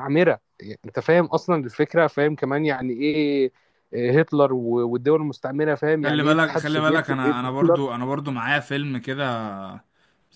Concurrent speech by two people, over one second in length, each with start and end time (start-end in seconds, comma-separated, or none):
6.0-7.8